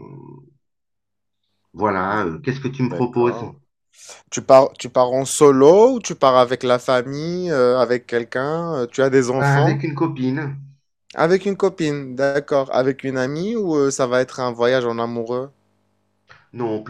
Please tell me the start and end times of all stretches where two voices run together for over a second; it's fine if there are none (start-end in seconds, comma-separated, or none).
none